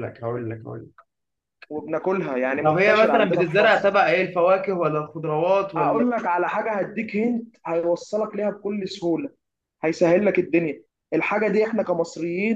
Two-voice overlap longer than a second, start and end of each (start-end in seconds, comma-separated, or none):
2.6-4.0